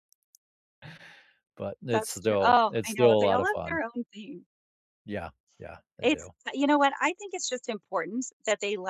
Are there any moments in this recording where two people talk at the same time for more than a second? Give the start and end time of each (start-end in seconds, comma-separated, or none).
1.9-3.8